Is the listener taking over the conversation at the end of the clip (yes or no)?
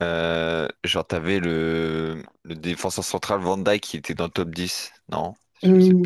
yes